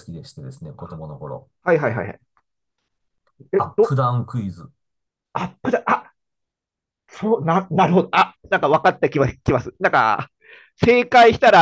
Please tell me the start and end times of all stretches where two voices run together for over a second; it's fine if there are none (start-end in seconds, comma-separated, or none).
none